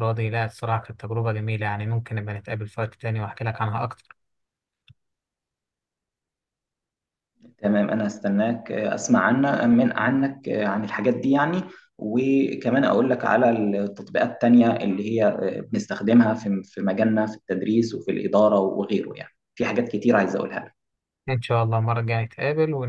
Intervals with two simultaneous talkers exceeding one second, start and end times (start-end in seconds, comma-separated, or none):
none